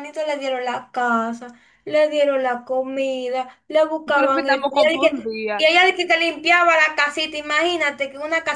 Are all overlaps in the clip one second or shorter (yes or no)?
no